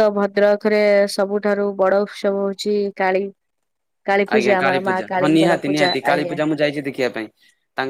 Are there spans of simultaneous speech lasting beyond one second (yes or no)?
yes